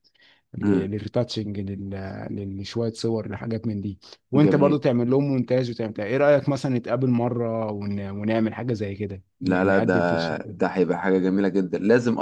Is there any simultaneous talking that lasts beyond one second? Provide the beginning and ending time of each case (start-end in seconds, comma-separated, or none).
9.4-10.6